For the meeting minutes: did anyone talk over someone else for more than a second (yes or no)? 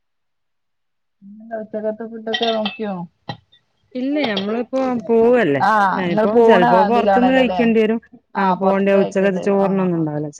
yes